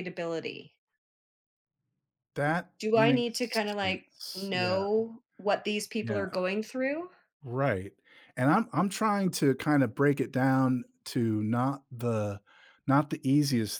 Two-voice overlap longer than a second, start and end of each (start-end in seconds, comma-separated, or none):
2.8-4.8